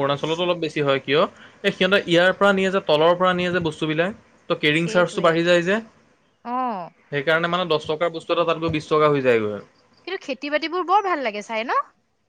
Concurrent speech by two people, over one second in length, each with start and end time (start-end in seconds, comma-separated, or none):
none